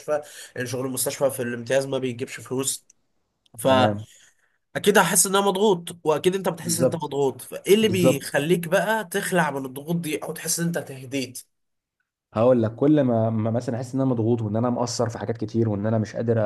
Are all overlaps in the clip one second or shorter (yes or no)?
yes